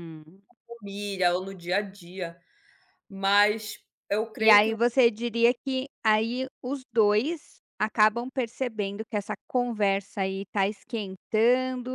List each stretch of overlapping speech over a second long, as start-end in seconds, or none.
none